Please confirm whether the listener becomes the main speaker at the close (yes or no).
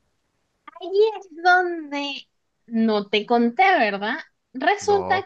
no